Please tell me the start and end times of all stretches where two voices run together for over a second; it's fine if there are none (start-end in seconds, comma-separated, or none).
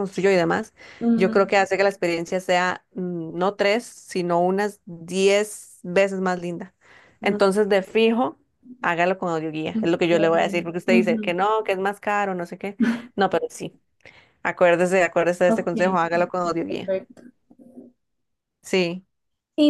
15.5-16.9